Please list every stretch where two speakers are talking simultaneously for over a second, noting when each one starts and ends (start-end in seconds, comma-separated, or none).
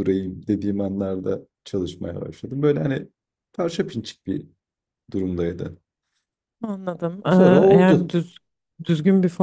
none